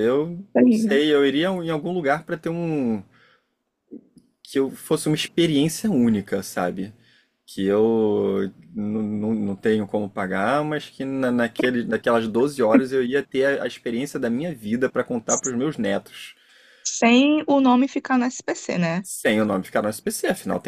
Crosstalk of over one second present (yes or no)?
no